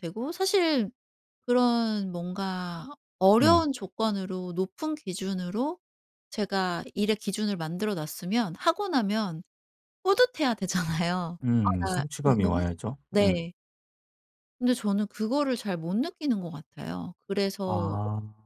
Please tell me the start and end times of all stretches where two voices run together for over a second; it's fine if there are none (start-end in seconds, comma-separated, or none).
11.4-13.4